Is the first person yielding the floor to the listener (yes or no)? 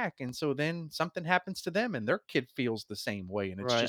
yes